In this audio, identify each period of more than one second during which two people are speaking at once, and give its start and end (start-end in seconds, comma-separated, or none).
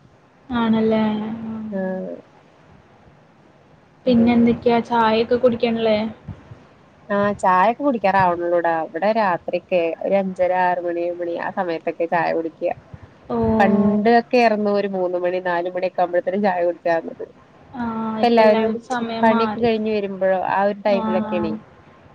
none